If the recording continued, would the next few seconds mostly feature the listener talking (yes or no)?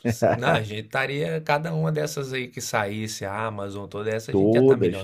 yes